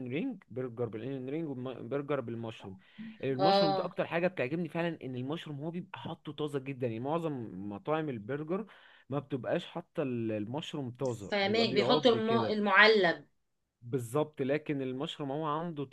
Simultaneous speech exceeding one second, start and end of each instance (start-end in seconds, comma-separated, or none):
11.3-12.6